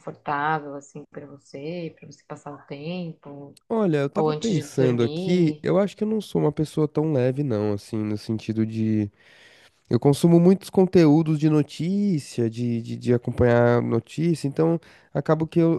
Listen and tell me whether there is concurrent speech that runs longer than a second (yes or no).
yes